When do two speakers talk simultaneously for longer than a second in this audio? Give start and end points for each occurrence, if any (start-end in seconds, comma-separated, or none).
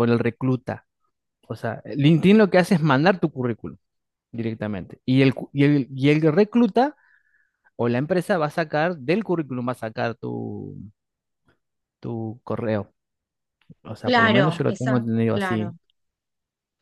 14.0-15.8